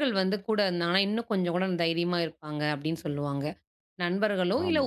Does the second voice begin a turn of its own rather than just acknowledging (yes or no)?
no